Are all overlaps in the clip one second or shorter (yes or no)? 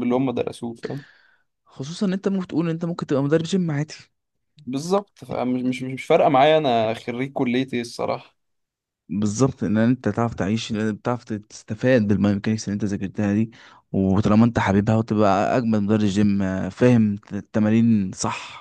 yes